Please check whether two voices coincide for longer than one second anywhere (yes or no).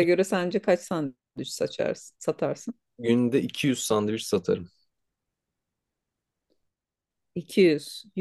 no